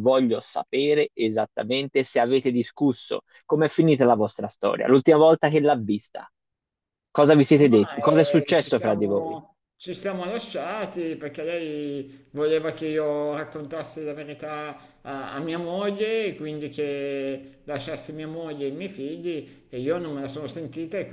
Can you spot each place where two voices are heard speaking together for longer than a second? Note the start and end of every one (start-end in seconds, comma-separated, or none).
7.7-9.4